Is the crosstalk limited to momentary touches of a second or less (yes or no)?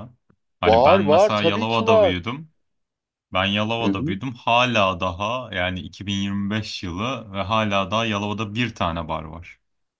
no